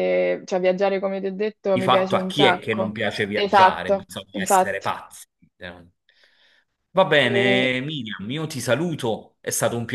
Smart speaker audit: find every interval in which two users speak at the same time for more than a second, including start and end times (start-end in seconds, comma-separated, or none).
1.7-4.9